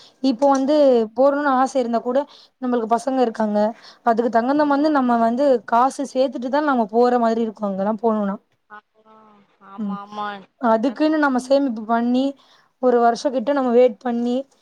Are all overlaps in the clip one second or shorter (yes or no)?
yes